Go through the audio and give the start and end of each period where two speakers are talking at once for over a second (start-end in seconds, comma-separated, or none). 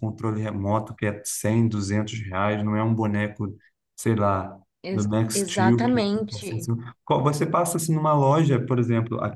4.9-6.7